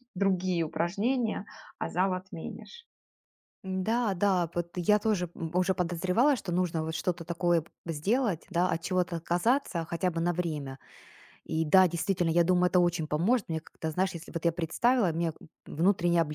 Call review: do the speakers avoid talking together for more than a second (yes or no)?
yes